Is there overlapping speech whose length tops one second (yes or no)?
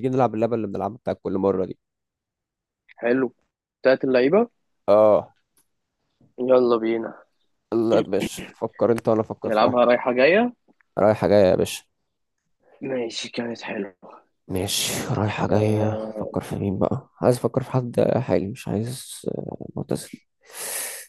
yes